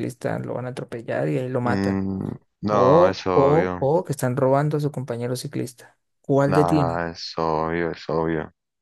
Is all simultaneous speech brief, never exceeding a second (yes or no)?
no